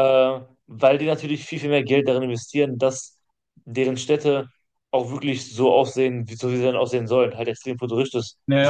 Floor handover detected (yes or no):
yes